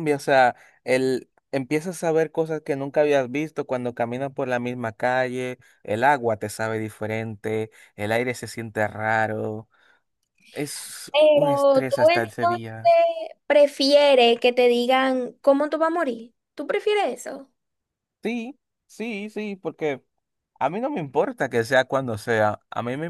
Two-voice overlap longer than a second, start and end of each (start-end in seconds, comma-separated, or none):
11.1-12.6